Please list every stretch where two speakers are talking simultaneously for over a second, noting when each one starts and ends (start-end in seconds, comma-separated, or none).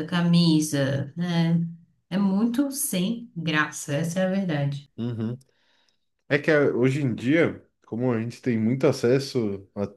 none